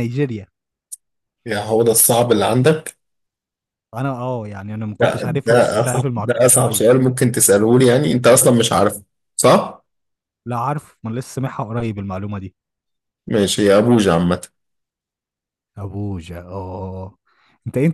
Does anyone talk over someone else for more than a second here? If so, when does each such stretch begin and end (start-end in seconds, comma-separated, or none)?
5.0-6.8